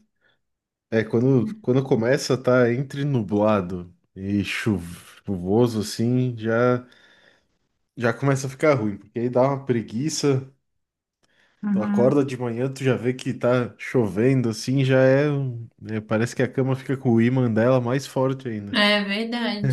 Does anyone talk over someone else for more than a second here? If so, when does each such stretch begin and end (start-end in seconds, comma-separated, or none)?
none